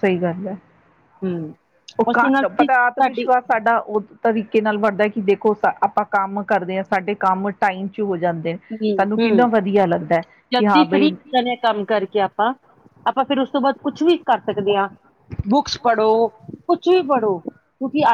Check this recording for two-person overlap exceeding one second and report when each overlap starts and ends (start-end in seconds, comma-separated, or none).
2.1-3.3